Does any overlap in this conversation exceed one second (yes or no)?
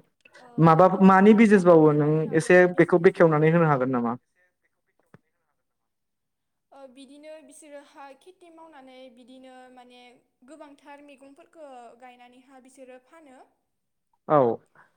yes